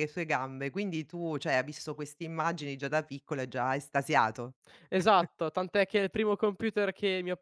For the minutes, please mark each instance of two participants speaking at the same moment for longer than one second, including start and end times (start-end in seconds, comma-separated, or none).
none